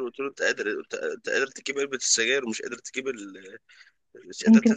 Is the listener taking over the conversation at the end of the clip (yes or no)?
no